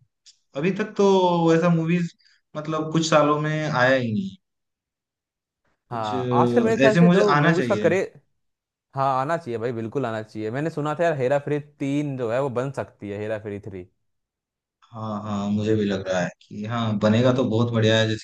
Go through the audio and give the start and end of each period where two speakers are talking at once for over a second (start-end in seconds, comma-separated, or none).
5.9-7.9